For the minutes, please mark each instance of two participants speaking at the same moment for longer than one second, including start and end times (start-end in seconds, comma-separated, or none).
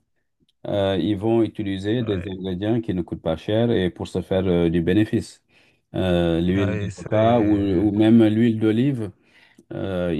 6.5-7.9